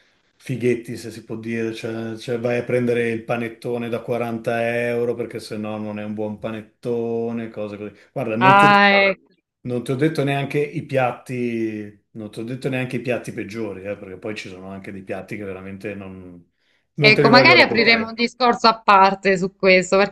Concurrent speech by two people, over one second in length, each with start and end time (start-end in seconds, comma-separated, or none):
17.0-18.2